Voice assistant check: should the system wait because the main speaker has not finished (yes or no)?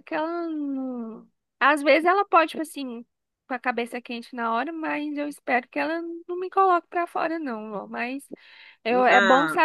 yes